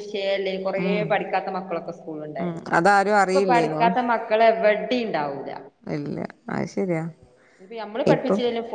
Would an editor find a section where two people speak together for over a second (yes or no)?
no